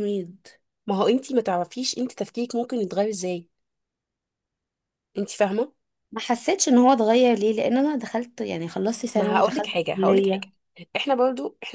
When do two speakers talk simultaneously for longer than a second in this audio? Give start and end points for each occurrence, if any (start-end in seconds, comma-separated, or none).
9.1-10.5